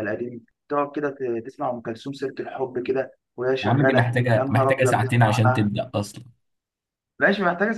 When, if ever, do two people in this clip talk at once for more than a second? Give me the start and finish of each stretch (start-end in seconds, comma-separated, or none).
3.6-5.7